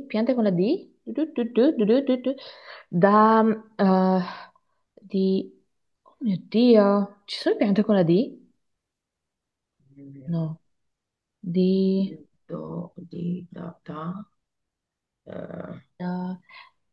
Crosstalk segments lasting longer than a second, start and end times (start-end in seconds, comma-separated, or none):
none